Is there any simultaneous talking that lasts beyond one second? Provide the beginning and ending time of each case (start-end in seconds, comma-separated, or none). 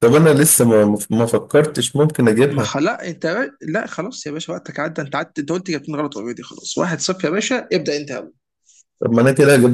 none